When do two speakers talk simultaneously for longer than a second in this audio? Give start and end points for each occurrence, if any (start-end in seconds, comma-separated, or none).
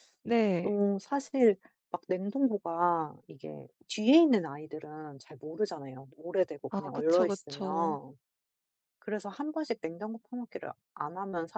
6.7-8.0